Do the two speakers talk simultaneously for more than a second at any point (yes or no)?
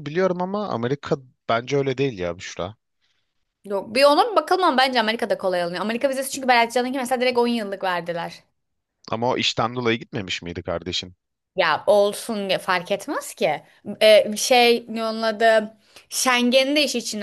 no